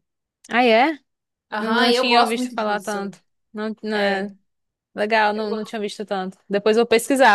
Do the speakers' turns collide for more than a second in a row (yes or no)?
yes